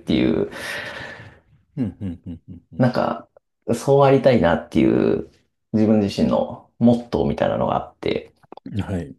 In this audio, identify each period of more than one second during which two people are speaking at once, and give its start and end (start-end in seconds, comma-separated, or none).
none